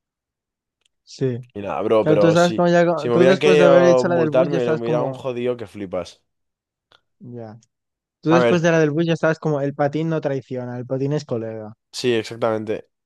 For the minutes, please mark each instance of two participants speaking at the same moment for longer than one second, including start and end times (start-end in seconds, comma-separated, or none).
2.0-5.2